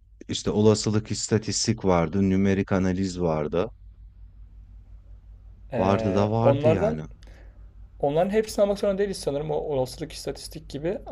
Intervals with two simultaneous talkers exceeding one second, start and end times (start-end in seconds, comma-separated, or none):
5.8-7.0